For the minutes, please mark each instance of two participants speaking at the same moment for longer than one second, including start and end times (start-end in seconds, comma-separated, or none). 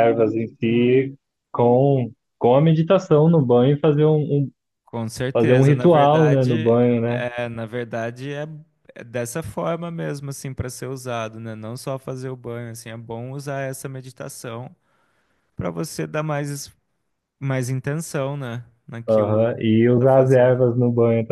5.3-7.2, 19.1-20.6